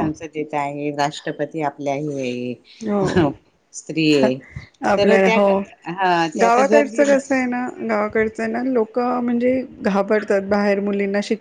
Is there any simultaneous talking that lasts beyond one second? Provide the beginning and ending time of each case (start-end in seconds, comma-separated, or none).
none